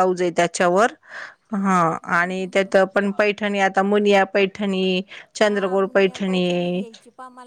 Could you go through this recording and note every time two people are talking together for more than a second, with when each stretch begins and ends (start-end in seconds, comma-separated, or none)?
5.4-6.8